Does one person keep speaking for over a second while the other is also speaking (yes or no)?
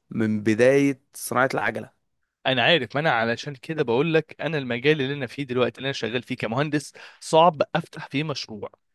no